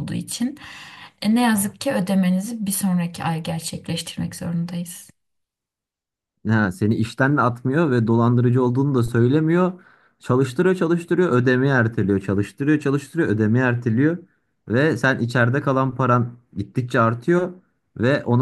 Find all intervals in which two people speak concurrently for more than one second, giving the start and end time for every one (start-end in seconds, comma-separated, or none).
none